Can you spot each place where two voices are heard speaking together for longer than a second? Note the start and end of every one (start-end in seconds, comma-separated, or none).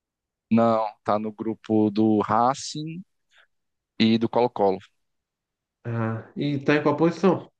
none